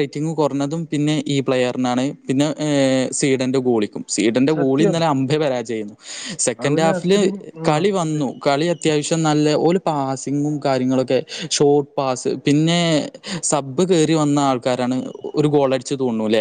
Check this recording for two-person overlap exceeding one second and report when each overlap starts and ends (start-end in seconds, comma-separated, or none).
none